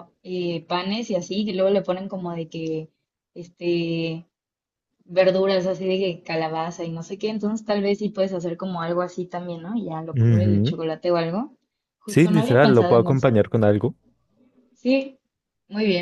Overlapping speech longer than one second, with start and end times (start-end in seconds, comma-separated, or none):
12.0-13.3